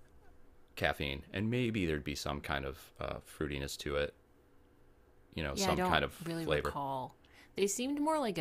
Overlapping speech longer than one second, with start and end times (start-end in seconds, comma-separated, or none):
5.5-6.8